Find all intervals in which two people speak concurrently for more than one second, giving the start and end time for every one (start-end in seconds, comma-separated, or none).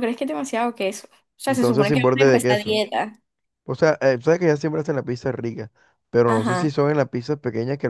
1.5-2.8